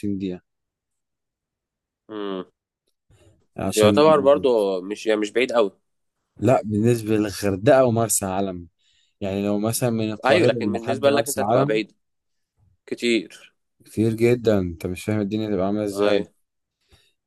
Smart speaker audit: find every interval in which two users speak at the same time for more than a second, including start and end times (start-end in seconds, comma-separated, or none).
10.2-11.8